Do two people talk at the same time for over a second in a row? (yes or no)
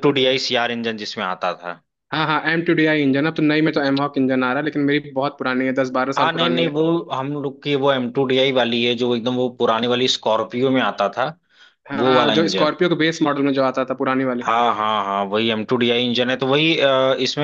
no